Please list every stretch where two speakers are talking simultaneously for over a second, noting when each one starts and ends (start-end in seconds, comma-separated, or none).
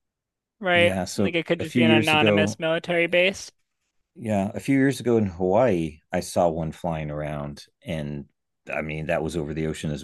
0.7-2.6